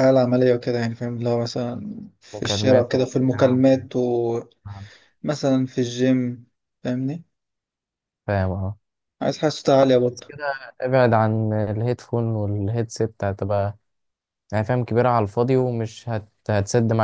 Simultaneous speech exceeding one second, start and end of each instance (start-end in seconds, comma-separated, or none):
2.3-3.6